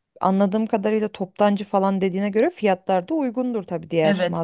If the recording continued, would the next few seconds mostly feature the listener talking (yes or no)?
yes